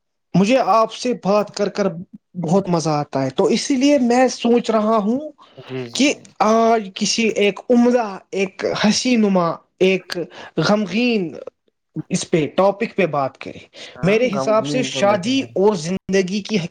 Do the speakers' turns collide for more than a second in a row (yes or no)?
yes